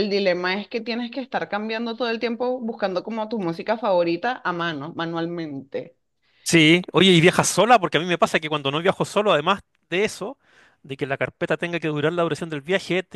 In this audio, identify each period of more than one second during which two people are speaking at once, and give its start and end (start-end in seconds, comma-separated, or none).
none